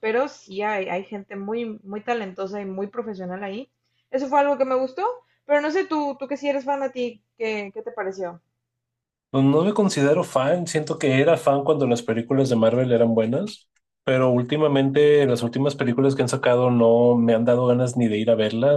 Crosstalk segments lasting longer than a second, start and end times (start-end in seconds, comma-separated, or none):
none